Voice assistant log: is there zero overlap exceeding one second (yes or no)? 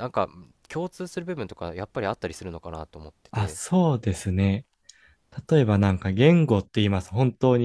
yes